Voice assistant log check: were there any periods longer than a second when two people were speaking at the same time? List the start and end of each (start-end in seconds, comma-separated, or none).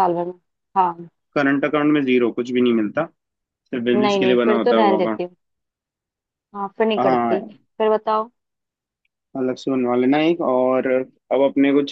3.9-5.2